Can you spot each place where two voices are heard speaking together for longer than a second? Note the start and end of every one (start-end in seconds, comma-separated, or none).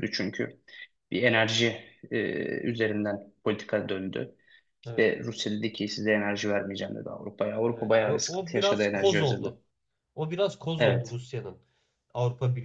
7.7-9.5